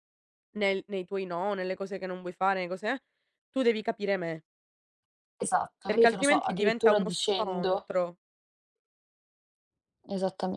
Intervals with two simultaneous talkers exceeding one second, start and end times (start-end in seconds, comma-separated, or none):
5.8-7.9